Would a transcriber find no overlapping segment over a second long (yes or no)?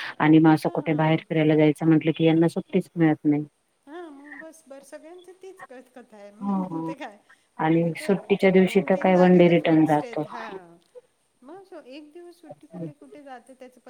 no